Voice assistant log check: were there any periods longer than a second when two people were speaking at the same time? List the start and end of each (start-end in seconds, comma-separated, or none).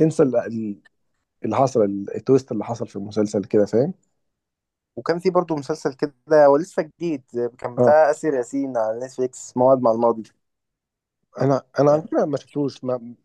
none